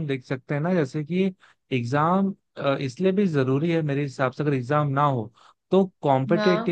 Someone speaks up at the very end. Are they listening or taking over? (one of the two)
listening